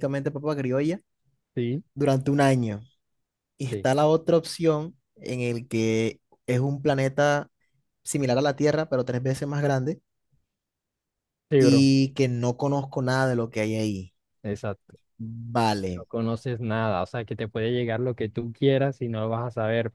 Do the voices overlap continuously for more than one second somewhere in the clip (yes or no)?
no